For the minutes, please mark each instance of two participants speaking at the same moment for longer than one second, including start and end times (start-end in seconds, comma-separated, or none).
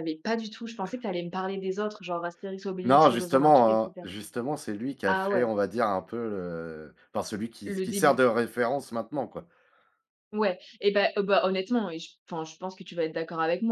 2.8-4.1